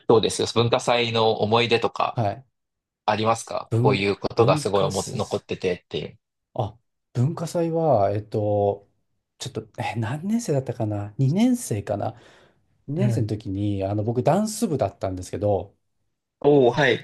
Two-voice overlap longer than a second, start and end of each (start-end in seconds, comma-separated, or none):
3.7-5.4